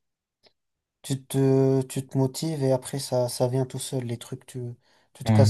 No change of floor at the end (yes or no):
yes